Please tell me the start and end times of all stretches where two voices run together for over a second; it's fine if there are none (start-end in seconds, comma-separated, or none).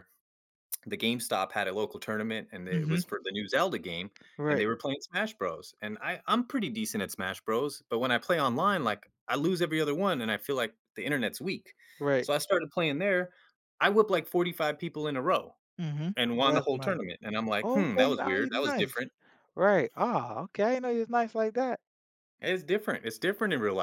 17.6-19.0